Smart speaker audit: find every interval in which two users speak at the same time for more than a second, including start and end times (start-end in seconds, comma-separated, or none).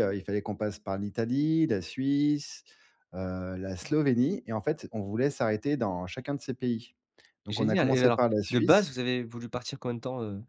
7.5-8.9